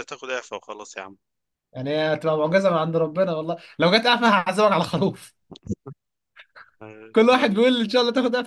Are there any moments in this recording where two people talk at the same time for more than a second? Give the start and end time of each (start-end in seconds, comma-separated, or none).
none